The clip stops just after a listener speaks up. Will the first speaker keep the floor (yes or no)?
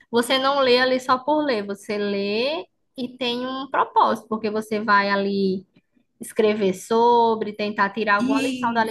yes